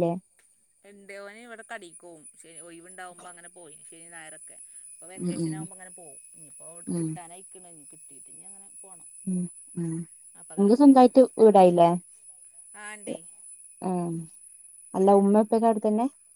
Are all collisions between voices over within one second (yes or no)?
yes